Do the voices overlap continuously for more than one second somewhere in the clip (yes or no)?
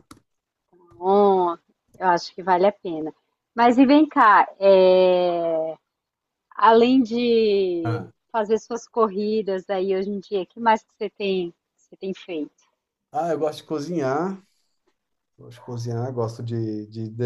no